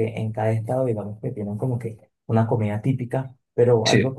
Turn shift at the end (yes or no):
no